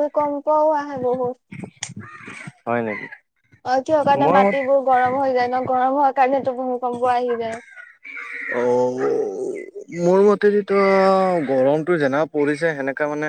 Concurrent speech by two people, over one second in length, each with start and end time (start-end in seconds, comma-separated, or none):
none